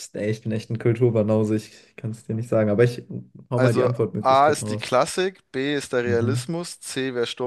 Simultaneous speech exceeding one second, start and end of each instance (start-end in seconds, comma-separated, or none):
3.5-4.9